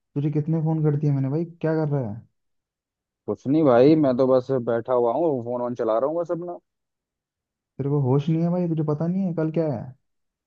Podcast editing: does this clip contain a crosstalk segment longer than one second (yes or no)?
no